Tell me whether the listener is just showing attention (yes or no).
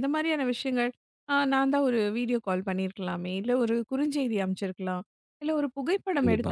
yes